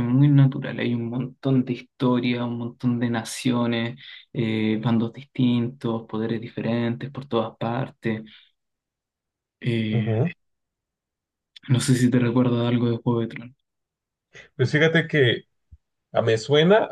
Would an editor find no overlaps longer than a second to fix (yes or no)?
yes